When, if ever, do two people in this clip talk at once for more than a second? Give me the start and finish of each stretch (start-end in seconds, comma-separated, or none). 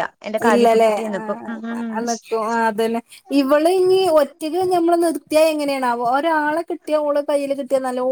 0.7-2.2